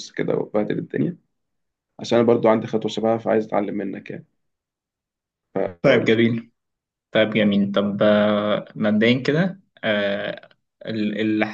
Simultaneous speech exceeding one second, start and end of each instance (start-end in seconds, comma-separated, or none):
none